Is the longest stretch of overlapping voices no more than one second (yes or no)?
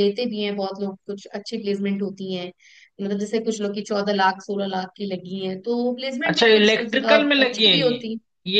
no